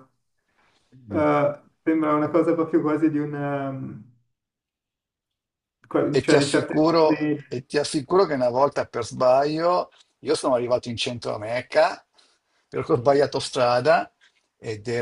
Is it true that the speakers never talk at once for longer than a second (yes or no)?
no